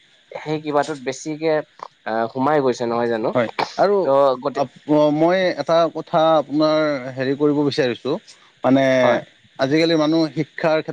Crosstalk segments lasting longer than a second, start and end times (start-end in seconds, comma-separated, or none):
none